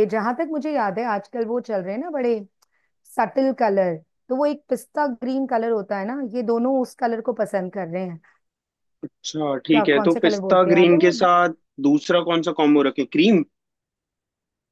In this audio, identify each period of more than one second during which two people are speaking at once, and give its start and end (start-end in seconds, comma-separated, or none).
9.7-11.1